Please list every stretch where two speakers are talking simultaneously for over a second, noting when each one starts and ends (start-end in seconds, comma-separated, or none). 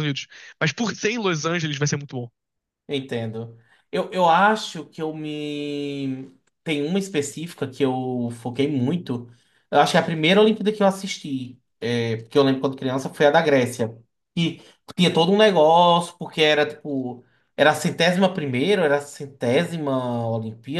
none